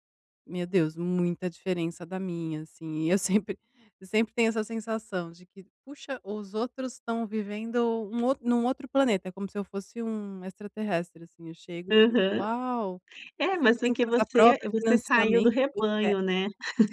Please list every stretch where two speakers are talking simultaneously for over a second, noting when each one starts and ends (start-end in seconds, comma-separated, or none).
13.5-16.2